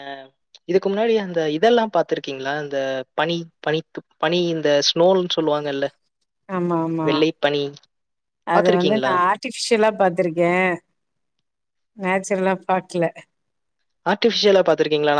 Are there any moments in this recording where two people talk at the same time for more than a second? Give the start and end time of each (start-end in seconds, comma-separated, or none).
none